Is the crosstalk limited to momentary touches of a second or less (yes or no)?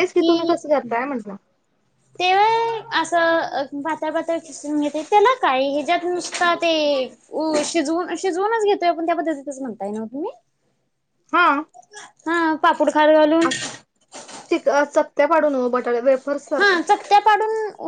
yes